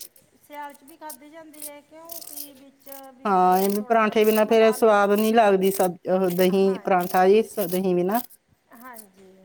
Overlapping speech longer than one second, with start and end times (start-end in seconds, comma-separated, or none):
3.3-5.0